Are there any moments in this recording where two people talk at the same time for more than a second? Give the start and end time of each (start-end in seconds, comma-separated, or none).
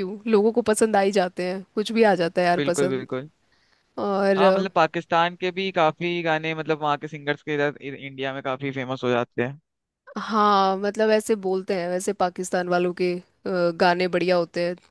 none